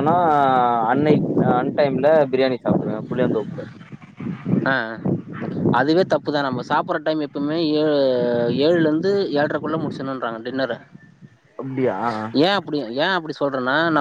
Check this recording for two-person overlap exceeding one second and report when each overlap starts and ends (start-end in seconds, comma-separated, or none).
none